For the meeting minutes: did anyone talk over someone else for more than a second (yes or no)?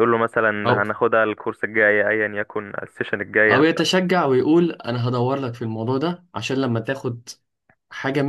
no